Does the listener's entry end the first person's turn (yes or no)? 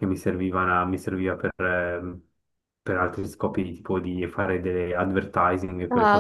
yes